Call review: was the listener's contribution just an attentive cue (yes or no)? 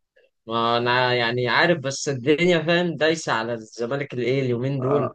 yes